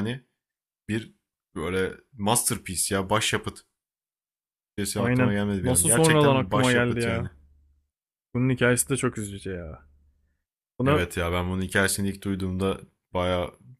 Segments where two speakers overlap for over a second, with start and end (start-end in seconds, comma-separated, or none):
5.0-7.3